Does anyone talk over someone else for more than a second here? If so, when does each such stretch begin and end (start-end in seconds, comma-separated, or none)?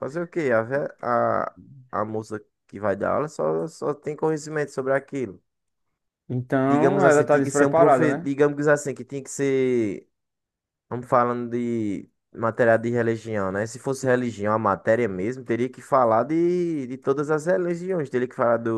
6.6-8.3